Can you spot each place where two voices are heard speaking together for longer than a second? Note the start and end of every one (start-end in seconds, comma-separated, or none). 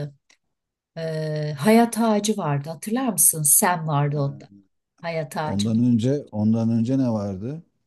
none